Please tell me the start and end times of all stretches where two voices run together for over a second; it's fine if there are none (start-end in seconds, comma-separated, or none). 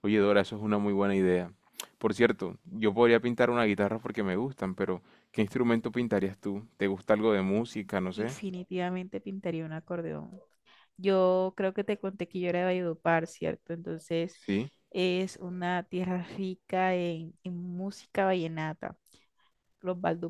none